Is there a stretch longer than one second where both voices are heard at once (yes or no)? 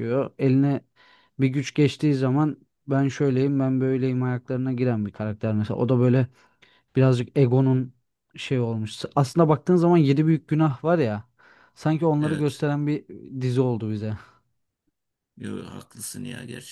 no